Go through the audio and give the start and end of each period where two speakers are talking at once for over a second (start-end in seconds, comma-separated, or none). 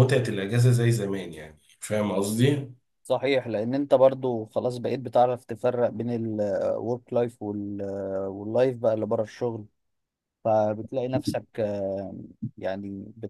none